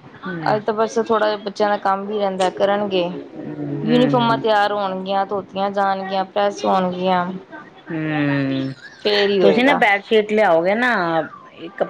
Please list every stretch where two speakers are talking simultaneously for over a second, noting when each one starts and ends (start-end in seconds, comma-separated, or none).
none